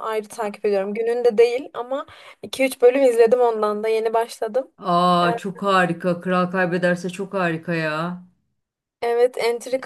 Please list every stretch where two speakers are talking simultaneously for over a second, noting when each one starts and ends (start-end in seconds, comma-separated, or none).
none